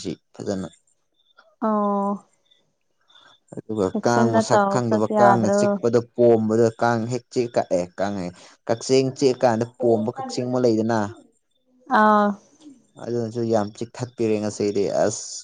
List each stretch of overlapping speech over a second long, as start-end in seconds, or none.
3.9-5.6